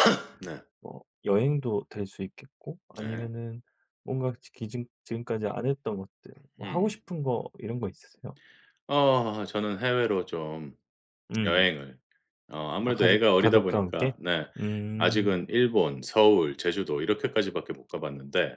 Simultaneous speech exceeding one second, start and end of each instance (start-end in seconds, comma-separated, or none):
12.8-14.1